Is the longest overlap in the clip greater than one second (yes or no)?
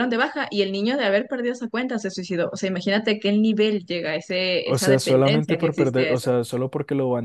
yes